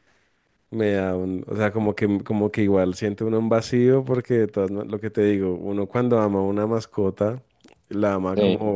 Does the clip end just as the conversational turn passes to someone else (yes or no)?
no